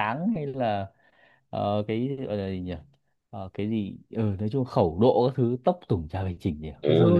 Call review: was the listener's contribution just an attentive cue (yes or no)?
no